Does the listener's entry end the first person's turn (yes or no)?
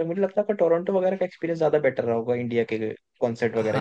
yes